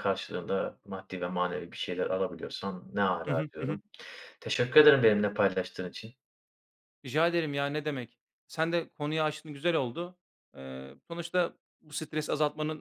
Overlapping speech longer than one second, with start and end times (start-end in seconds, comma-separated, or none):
none